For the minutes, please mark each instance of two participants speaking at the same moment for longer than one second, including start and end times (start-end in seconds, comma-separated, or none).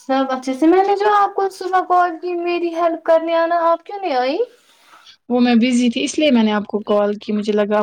none